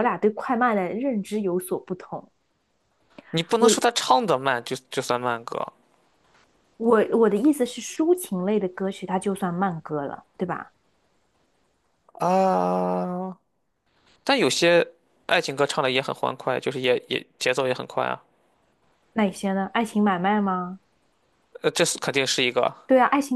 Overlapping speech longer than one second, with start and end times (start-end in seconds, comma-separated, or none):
none